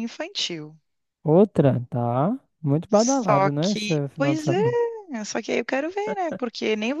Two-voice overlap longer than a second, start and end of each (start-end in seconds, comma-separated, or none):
2.9-4.5